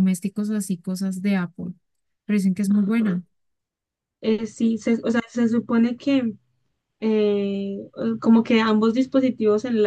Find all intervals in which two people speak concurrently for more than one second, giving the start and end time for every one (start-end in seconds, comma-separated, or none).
none